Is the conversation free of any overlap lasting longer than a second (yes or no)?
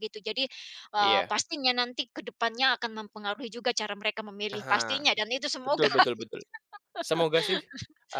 yes